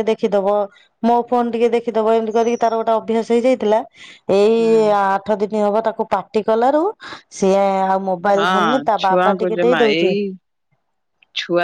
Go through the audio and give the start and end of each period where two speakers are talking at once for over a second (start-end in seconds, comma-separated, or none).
8.3-10.1